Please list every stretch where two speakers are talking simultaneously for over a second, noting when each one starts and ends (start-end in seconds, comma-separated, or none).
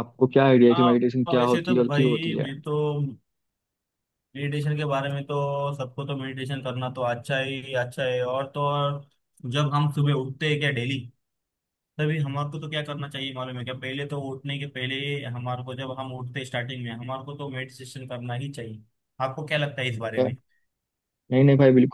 0.7-2.5